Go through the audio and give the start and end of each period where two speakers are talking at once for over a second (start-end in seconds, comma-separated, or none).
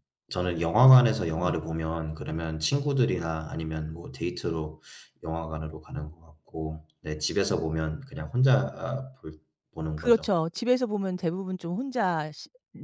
none